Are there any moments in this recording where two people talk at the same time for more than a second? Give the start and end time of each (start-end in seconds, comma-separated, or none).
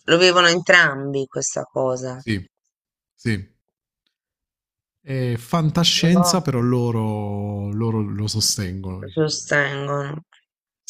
none